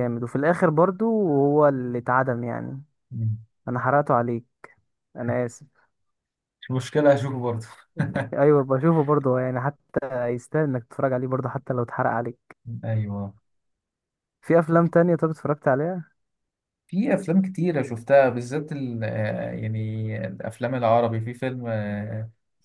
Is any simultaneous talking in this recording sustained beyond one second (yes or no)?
no